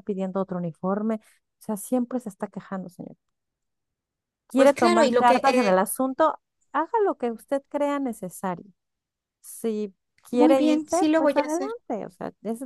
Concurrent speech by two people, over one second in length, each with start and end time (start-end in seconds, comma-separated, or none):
4.5-5.8, 10.3-11.7